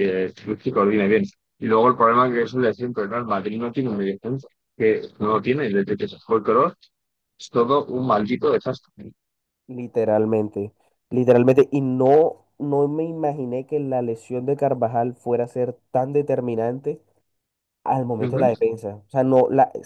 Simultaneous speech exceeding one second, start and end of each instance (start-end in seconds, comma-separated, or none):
none